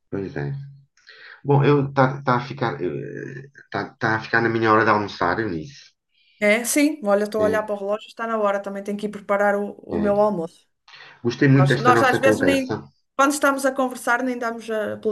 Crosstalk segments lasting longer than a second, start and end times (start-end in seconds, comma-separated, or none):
11.5-12.7